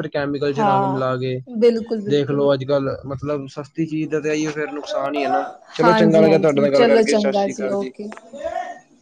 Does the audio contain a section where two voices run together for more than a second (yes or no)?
yes